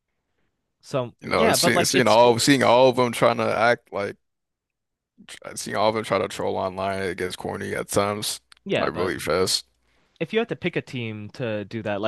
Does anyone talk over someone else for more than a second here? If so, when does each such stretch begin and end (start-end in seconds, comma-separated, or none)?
1.2-2.8